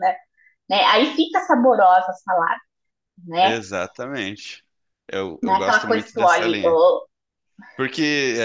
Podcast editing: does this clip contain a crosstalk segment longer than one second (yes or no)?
yes